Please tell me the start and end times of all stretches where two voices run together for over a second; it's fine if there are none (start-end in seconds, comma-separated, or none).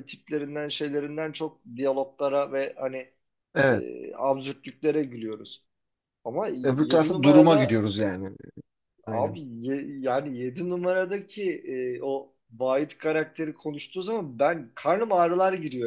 6.6-7.9